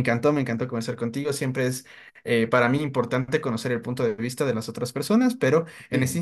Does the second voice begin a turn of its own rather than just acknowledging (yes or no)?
no